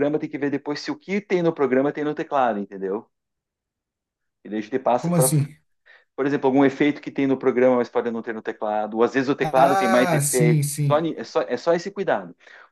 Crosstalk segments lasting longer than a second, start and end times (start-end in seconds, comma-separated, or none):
9.4-11.1